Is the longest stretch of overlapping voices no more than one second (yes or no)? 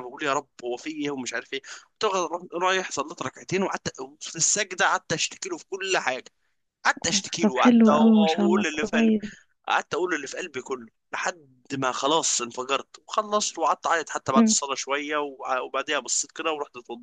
no